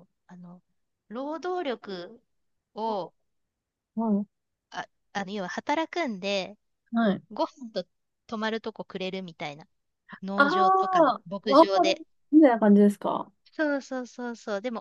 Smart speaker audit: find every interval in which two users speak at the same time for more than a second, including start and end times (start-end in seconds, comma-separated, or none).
10.3-11.9